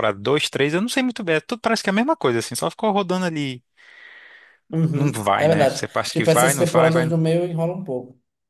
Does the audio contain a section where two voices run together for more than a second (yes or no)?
yes